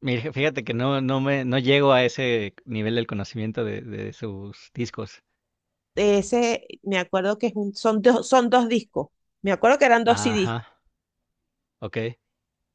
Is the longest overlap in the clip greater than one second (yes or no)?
no